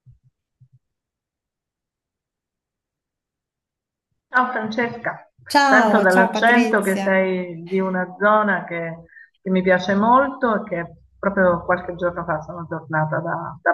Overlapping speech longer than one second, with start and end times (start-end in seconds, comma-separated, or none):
5.7-7.1